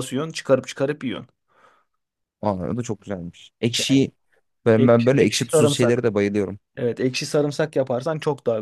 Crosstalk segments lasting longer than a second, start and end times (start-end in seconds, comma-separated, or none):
4.8-6.0